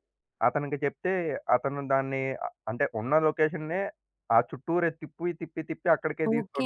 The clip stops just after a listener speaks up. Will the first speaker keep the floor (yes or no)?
no